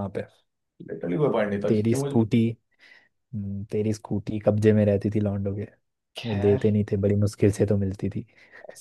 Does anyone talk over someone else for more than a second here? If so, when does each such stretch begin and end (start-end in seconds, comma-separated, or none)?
none